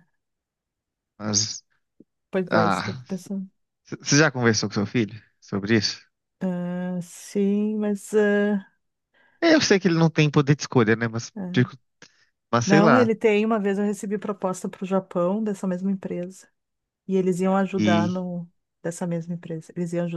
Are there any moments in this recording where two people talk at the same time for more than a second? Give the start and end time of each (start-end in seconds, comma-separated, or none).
none